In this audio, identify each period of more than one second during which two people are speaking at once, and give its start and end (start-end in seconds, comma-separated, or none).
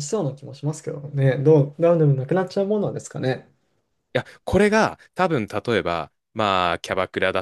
none